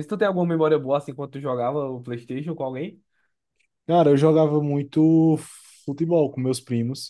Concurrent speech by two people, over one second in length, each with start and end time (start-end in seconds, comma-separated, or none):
none